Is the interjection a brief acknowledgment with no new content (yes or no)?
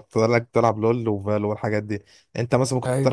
yes